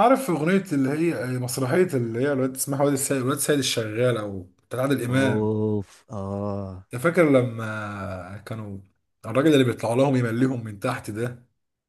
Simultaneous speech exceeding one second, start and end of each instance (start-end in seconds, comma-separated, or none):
none